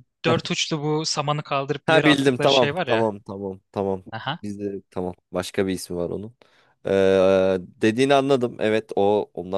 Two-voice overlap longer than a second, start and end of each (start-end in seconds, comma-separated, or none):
1.9-3.1